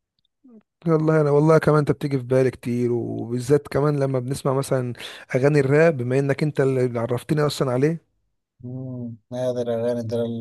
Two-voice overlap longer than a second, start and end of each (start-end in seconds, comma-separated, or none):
none